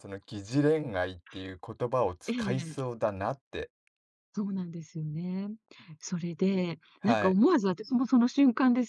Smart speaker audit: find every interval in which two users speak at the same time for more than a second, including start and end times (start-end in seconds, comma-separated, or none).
none